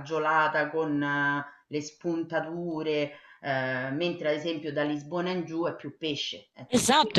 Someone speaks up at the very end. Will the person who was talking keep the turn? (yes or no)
no